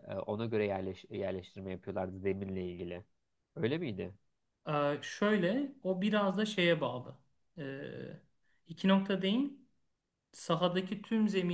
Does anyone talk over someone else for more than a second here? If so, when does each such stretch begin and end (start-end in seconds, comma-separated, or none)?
none